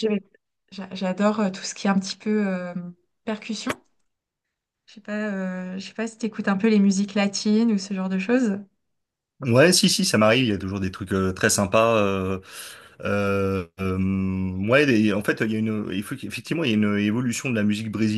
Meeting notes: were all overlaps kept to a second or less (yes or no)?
yes